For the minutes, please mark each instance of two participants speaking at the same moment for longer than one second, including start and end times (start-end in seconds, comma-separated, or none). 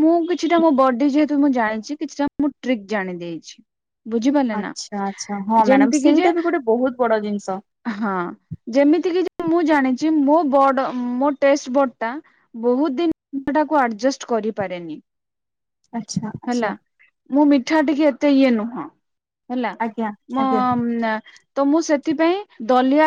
none